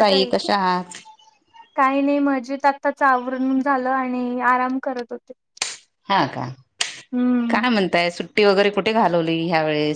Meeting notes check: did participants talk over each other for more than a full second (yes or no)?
no